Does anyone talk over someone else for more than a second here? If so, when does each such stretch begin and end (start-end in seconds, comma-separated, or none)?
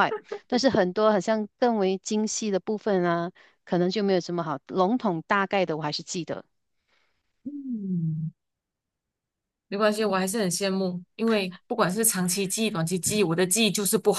none